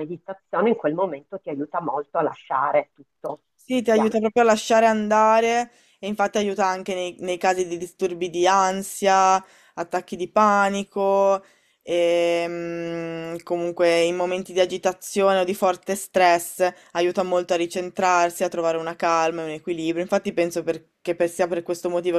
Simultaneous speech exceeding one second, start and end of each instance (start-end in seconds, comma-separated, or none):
none